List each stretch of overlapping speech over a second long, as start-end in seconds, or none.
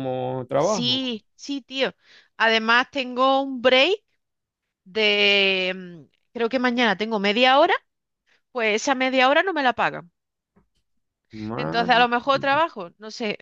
none